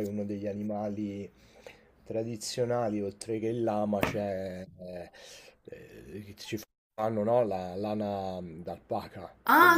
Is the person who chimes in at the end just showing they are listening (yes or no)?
no